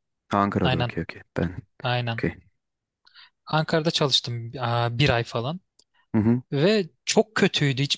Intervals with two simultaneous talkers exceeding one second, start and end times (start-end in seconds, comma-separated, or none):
none